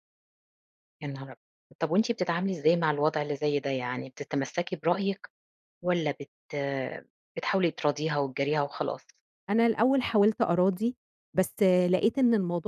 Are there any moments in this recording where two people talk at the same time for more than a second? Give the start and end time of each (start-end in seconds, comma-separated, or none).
none